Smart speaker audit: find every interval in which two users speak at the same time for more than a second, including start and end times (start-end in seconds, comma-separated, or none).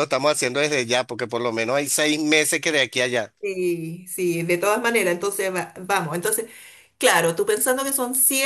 none